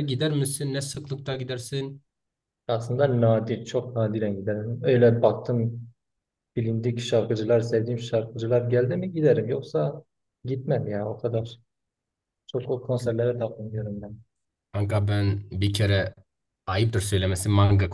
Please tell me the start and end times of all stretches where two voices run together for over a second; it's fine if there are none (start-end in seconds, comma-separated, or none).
none